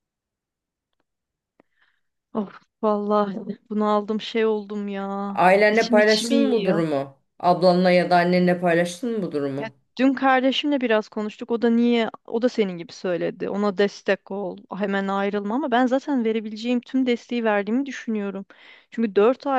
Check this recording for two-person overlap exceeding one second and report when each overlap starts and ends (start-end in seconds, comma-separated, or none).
5.3-6.8